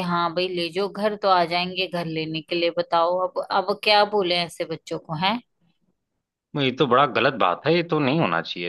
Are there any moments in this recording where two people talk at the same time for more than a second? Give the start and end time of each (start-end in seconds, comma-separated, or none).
none